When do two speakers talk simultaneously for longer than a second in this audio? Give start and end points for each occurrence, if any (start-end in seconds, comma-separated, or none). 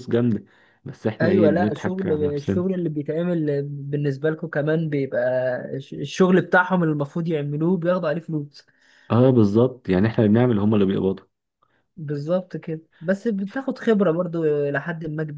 1.2-2.6